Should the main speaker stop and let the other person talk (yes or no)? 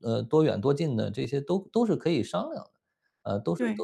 no